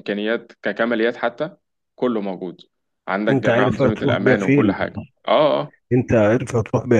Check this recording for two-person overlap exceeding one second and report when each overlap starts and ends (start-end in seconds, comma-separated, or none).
3.3-4.9